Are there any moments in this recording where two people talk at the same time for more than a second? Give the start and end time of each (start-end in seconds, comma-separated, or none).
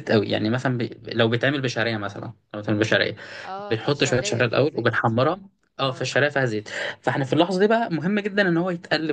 3.7-5.1